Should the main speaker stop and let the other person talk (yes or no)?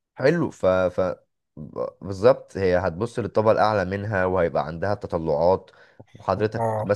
no